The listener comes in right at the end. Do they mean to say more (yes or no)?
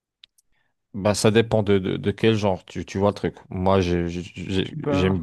no